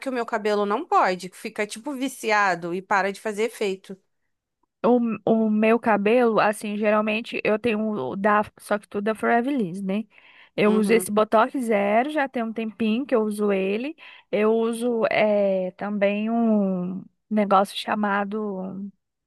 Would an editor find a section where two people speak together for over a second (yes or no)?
no